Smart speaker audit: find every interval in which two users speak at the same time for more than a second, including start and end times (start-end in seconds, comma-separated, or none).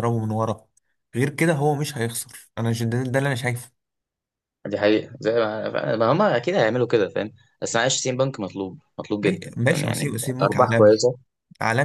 9.2-11.0